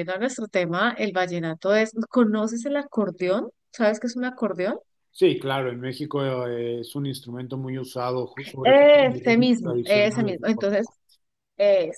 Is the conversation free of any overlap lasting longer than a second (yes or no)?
no